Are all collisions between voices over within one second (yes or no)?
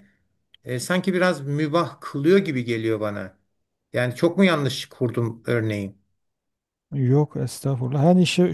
yes